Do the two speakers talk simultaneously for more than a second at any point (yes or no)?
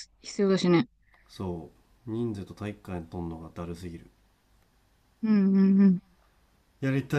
no